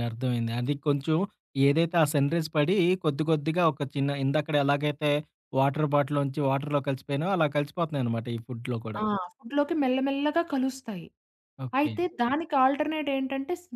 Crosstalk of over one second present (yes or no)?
no